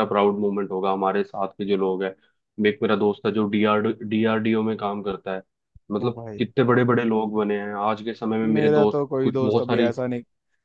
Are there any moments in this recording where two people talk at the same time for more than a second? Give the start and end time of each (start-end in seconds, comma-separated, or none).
8.4-9.9